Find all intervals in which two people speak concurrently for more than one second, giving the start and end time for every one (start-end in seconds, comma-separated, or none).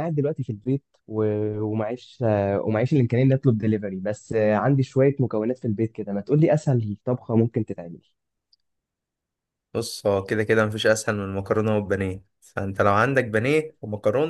none